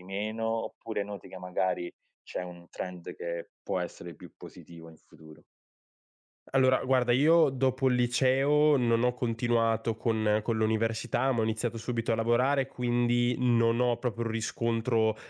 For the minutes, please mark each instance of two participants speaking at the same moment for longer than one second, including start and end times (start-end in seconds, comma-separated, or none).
none